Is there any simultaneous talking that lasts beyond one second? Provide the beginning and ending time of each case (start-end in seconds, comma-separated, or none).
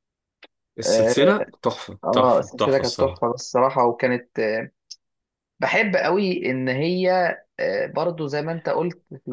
2.0-3.2